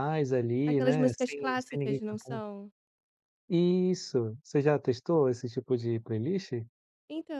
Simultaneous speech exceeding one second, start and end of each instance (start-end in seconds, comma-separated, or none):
0.7-2.4